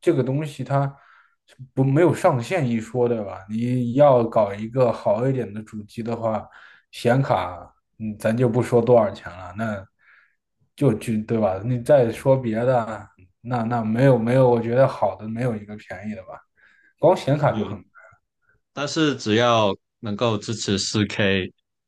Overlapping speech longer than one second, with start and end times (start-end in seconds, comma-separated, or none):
none